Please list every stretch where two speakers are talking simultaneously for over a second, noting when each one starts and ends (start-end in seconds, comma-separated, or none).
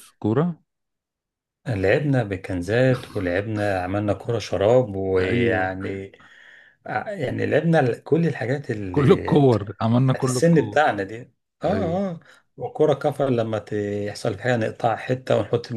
8.9-10.8